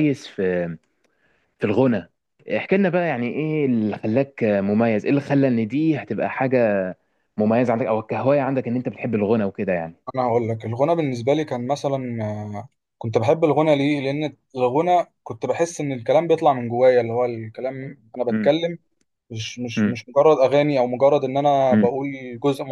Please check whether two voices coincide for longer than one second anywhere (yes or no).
no